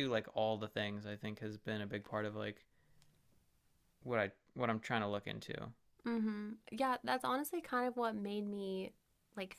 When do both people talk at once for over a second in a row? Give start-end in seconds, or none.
none